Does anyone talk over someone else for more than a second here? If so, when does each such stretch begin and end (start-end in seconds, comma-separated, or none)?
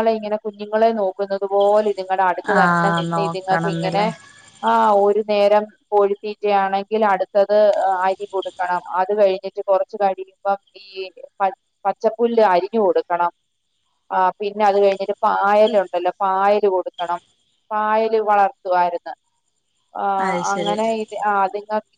2.5-4.0